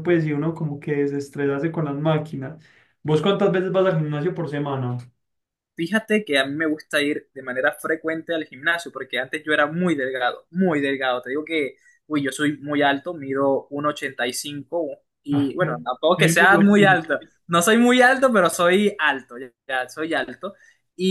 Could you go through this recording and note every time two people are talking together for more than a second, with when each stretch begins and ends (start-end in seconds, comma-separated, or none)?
15.3-17.0